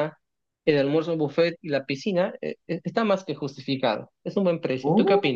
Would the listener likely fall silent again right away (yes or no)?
no